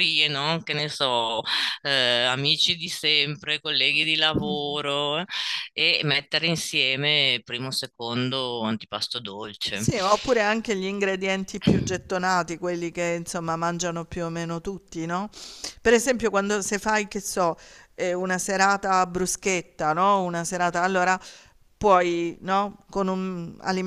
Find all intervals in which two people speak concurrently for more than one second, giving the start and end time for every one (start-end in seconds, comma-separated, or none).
none